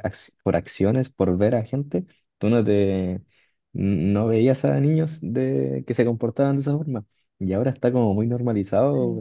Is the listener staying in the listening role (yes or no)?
yes